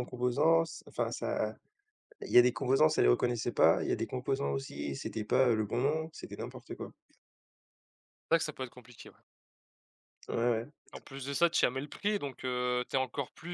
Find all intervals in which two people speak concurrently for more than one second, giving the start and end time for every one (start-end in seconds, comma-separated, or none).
none